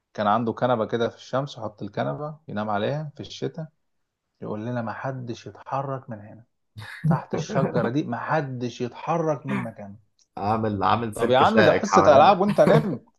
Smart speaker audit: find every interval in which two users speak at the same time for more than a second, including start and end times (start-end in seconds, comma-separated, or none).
11.1-12.4